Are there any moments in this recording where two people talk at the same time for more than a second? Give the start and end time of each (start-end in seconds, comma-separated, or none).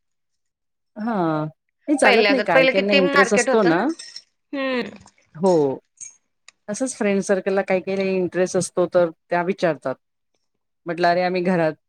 2.0-3.8